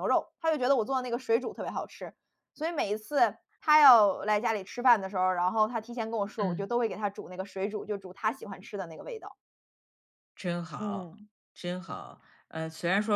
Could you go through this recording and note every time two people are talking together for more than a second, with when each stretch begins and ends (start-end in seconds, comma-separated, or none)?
none